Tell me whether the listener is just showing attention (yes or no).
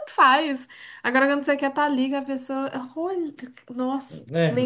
no